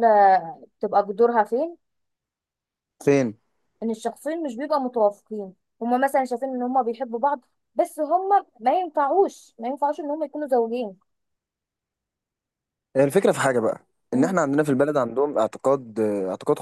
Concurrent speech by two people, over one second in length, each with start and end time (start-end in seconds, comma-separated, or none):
none